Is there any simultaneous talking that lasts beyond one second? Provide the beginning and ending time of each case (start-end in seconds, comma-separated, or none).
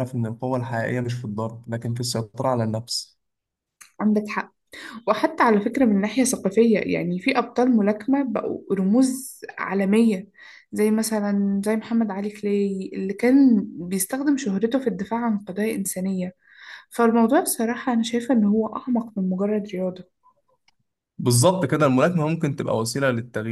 none